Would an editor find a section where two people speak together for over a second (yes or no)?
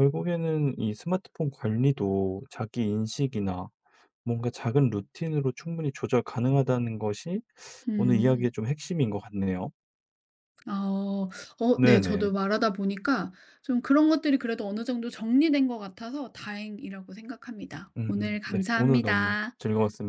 yes